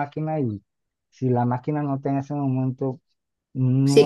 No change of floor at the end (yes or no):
no